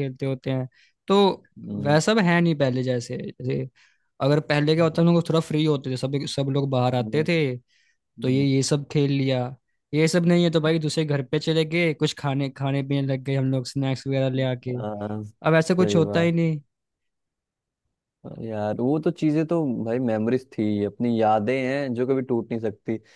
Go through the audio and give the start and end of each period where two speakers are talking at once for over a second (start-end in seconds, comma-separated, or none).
none